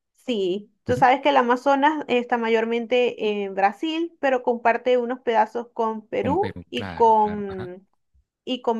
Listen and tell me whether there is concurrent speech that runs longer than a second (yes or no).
yes